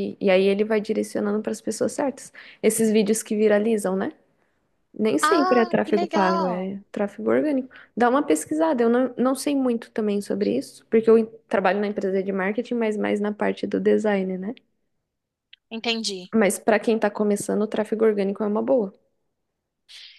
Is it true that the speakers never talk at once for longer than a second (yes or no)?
no